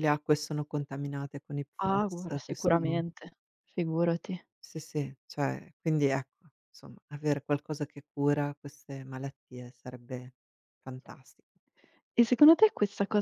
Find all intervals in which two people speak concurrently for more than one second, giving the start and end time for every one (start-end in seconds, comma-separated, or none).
1.8-3.0